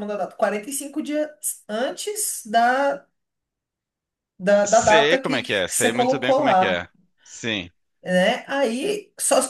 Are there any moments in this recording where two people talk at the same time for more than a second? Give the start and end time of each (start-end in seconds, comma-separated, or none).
4.6-6.9